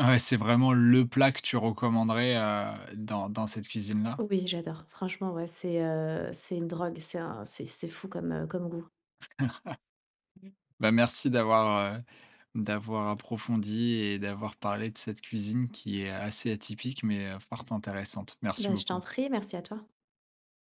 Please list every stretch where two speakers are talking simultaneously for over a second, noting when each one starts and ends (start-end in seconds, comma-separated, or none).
none